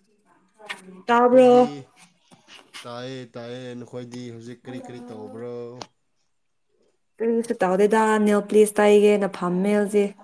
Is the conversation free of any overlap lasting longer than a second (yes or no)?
yes